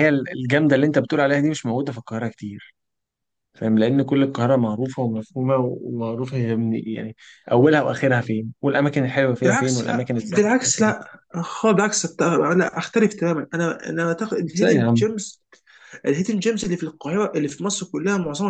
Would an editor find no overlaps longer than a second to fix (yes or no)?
no